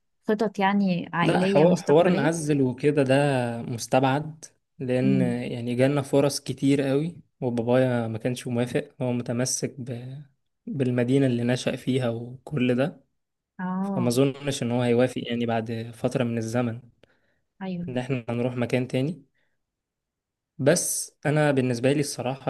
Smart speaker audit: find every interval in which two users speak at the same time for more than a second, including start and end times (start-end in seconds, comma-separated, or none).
1.2-2.5